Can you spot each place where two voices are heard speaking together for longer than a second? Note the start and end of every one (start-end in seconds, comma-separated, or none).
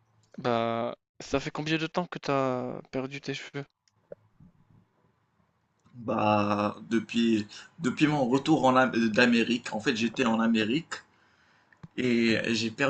none